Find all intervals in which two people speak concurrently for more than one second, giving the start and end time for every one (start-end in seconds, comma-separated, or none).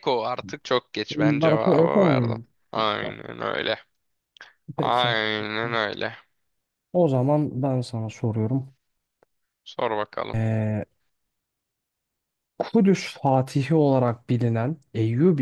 1.1-3.2